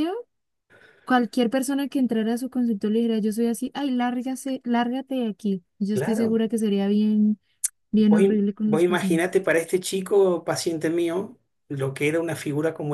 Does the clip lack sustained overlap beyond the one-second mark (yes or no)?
no